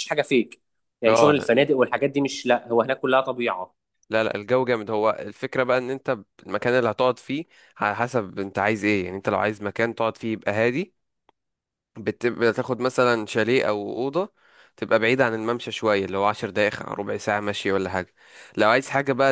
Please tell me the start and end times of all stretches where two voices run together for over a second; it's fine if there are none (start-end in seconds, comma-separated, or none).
none